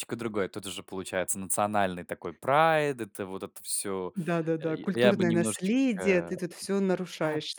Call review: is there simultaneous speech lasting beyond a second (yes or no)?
yes